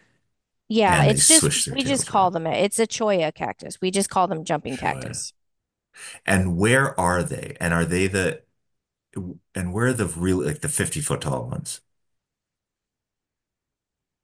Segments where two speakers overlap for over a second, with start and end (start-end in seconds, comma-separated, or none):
0.8-2.3